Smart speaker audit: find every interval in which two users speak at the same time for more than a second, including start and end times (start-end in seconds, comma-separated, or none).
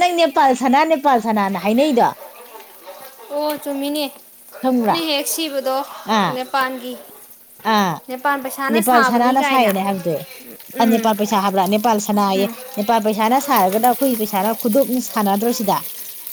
none